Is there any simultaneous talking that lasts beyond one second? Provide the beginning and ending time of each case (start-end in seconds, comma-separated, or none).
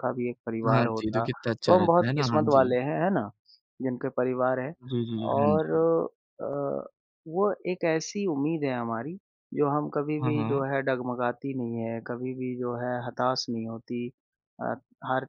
0.7-2.8